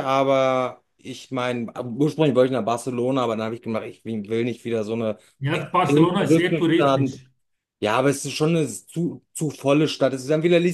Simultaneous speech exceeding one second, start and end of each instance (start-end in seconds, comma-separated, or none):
5.5-7.2